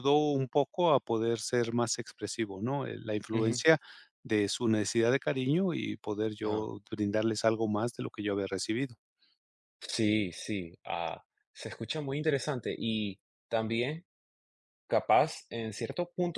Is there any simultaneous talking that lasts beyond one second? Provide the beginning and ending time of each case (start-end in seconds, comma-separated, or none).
none